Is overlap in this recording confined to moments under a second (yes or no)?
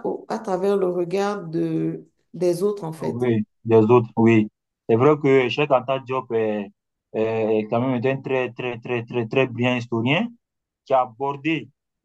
yes